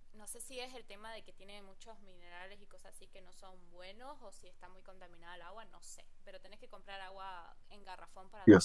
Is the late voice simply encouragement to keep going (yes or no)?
no